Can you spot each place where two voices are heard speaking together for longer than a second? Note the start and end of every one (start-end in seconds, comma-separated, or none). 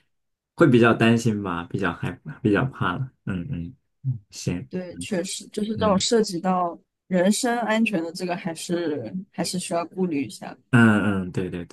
none